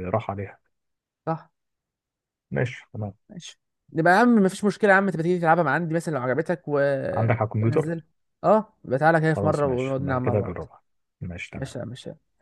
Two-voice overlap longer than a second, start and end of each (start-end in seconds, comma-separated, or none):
9.3-10.6